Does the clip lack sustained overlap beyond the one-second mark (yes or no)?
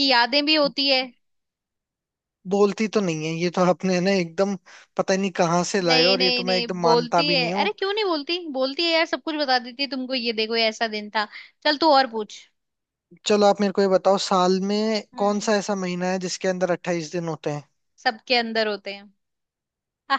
no